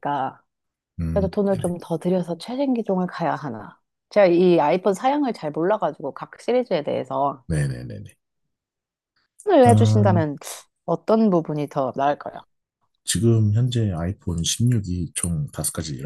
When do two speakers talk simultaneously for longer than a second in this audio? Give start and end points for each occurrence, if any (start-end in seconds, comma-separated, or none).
none